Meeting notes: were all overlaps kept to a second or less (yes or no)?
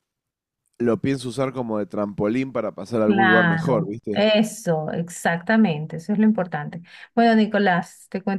no